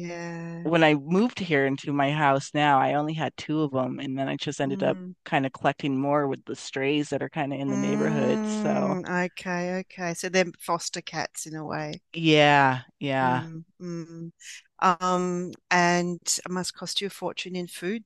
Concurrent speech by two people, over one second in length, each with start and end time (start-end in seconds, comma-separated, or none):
7.7-8.9